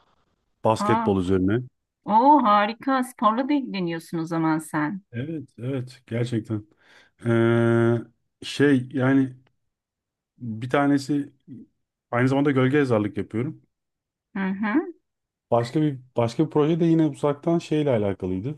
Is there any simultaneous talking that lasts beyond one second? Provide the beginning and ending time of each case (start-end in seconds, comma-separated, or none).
none